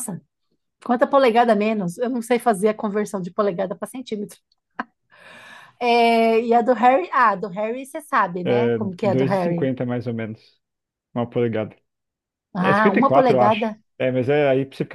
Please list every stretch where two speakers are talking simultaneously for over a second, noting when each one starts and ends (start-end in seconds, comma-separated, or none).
8.4-9.7, 12.6-13.8